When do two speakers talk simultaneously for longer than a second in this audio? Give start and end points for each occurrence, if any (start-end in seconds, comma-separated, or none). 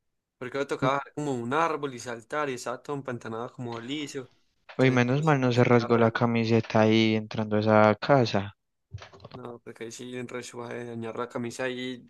4.8-6.1